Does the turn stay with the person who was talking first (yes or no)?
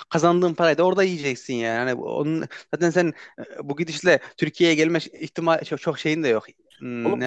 yes